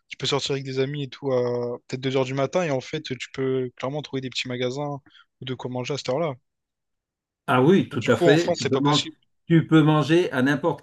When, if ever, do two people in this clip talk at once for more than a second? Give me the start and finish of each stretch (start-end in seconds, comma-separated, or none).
7.8-9.0